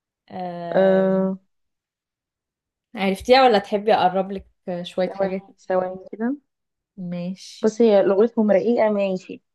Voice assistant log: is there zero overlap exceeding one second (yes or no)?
yes